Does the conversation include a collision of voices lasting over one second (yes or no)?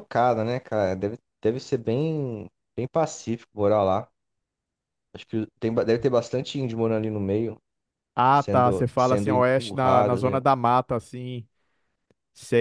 yes